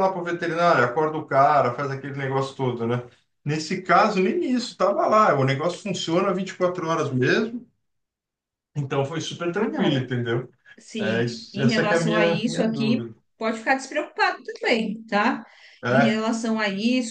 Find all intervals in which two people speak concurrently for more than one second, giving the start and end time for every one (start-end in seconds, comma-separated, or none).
11.0-13.1